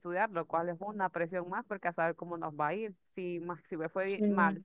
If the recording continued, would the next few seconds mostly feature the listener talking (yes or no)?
no